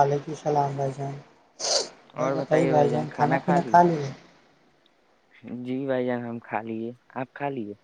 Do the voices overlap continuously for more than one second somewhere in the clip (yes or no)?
yes